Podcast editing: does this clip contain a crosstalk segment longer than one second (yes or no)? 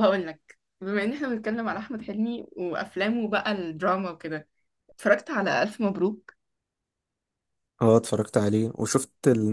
no